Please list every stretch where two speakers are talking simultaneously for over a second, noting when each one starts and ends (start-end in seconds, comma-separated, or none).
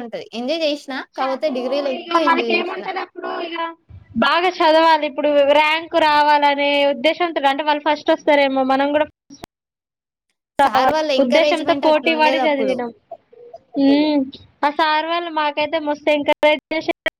10.6-12.8